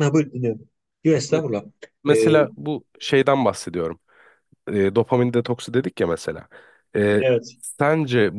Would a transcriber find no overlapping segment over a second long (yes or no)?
yes